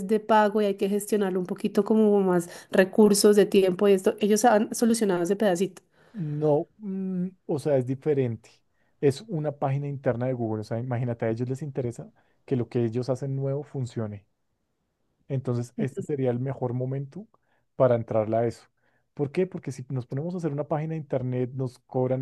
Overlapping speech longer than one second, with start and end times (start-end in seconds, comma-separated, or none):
none